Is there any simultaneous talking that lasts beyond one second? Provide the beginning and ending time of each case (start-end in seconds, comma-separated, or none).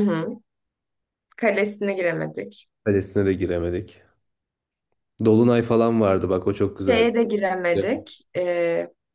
none